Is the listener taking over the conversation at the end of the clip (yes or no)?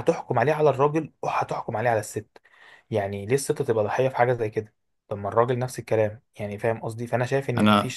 no